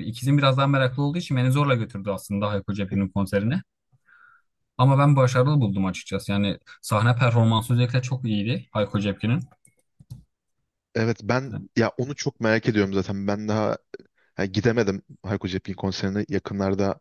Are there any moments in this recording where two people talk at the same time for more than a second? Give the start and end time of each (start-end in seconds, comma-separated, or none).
none